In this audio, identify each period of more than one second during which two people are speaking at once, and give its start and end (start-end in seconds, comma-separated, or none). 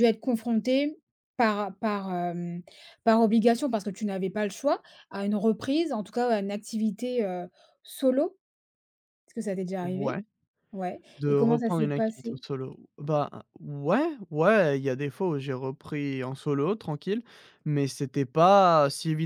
11.2-12.4